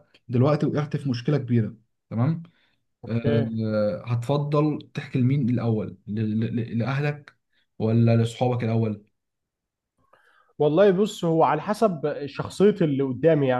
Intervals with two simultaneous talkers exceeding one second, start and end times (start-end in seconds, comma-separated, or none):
none